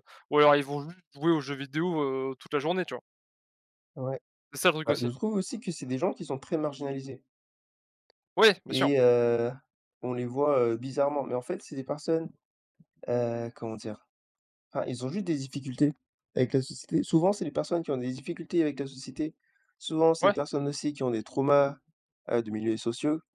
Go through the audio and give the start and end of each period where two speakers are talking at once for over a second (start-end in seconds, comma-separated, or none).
none